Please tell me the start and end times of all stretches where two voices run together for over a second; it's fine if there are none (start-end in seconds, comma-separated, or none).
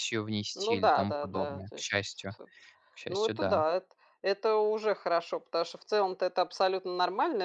0.6-2.4